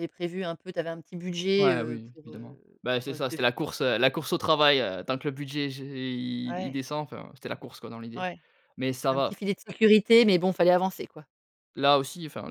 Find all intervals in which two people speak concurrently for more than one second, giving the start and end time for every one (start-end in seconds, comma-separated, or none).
1.6-3.4